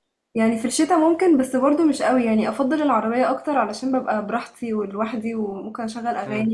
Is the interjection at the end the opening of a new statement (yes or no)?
no